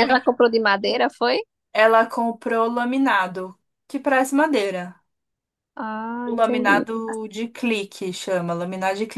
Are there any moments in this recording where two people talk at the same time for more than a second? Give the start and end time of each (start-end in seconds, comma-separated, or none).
none